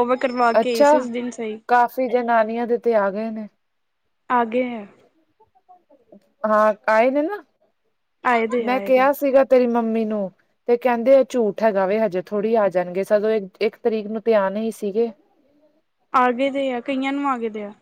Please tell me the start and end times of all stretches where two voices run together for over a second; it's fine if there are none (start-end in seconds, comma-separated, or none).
none